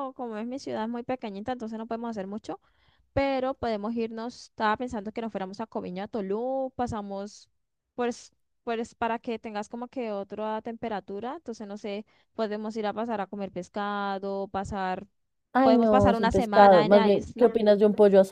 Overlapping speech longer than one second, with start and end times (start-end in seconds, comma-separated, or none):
15.6-17.5